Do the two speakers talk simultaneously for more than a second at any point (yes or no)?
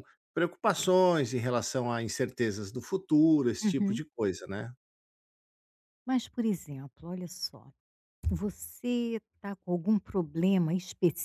no